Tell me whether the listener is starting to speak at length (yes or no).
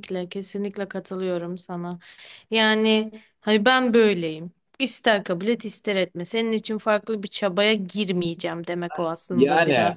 yes